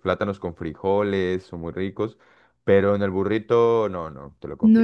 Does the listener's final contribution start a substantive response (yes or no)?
yes